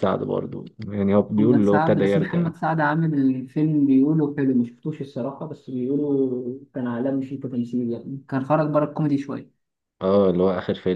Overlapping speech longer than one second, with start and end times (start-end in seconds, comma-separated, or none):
1.2-2.5